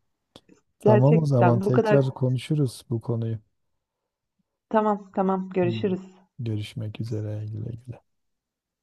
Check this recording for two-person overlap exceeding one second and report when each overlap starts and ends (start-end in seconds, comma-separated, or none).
0.8-2.0